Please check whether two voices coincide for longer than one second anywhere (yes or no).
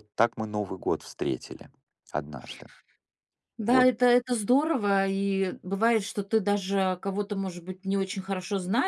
no